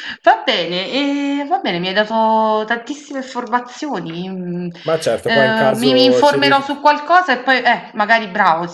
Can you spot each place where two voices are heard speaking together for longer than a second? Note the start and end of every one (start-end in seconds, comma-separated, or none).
5.2-6.8